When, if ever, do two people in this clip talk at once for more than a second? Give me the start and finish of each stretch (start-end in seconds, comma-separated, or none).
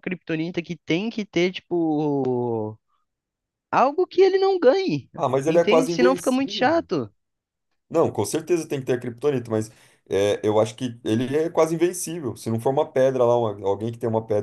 5.5-6.9